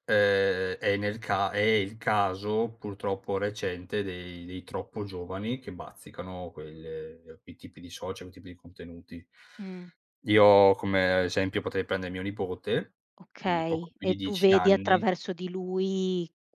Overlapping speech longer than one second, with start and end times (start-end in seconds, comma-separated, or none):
13.4-15.0